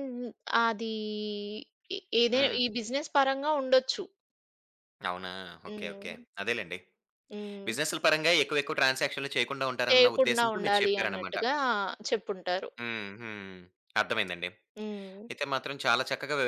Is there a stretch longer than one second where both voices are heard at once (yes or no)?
yes